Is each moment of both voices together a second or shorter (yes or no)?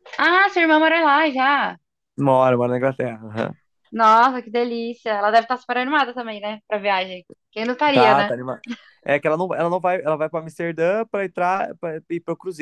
yes